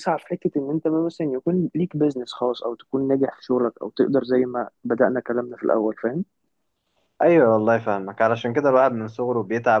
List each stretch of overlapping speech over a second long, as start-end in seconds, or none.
none